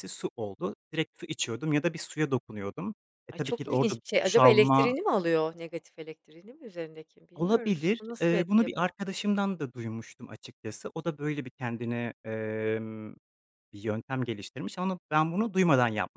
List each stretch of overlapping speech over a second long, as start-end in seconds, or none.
3.3-4.9, 7.3-8.9